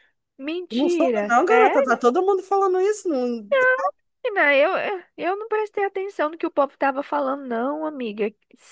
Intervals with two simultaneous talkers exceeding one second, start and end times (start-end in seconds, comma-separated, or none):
0.7-2.0